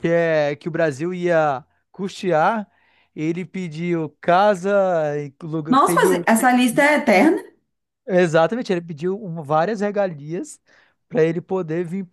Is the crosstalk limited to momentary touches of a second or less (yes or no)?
yes